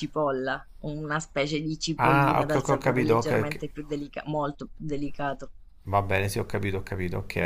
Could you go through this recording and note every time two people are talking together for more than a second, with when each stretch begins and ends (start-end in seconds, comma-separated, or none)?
2.0-3.6